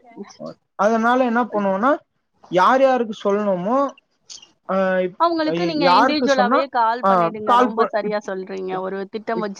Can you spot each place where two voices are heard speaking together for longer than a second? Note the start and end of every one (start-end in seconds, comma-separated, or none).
none